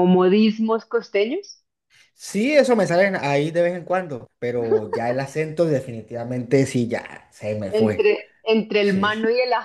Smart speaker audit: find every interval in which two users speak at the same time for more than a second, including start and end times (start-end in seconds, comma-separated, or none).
none